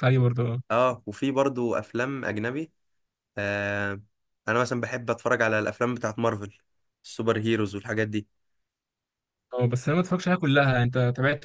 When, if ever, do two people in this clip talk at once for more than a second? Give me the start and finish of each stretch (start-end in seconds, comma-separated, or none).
none